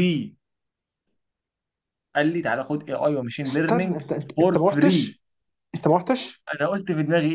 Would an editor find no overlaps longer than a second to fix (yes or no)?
no